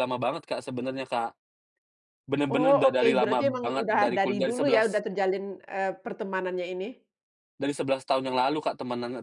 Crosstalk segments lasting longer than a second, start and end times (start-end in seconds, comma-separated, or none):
2.5-5.0